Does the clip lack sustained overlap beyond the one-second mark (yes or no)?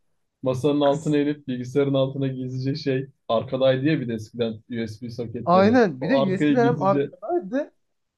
no